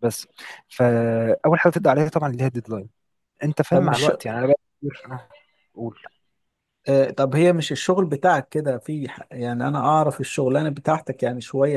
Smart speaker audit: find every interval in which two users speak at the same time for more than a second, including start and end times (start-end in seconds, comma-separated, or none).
none